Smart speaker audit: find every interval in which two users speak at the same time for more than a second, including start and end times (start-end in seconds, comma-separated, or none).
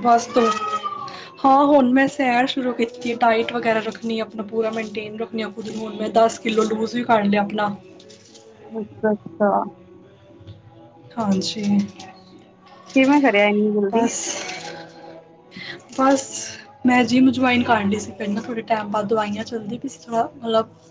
none